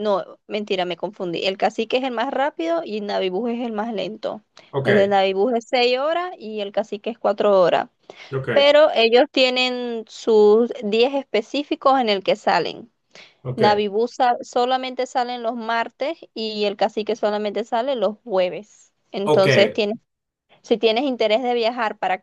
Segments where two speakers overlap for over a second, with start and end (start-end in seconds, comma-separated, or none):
none